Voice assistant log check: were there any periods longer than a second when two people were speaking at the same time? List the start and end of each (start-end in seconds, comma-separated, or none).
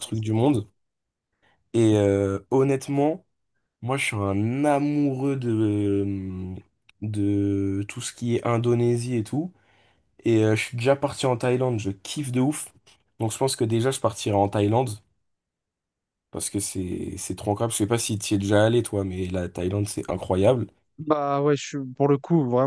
none